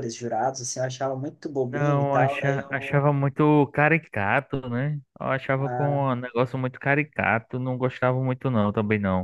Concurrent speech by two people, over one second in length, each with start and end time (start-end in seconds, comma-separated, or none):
1.7-3.1